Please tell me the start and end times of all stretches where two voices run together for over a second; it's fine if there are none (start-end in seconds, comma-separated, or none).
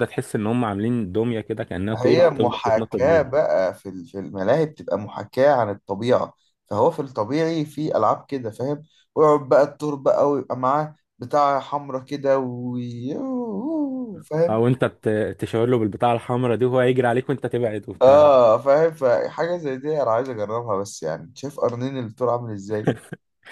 1.9-3.4